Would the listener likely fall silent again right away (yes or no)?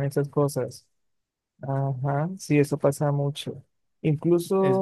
yes